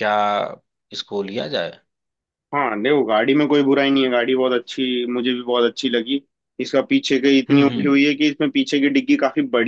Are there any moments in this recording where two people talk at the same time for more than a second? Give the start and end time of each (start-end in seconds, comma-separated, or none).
none